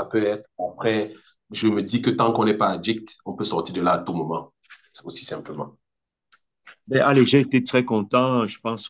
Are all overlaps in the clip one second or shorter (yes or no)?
yes